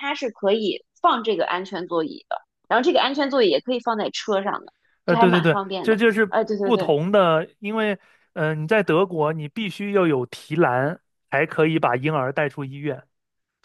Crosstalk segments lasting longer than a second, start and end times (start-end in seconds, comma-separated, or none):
5.0-7.0